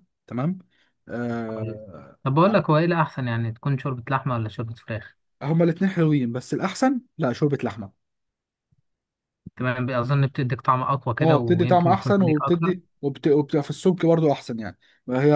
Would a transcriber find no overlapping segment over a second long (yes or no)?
no